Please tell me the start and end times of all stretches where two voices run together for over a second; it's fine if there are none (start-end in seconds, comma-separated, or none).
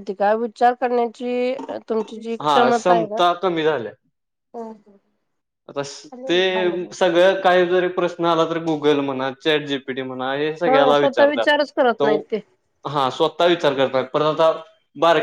10.7-12.0